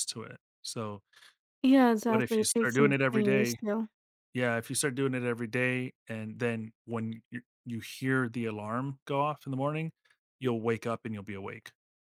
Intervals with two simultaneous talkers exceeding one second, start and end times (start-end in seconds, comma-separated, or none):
2.1-3.6